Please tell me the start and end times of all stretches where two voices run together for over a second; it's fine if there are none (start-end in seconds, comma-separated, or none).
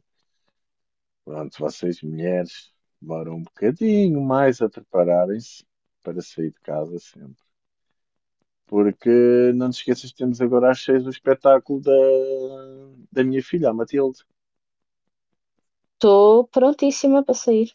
none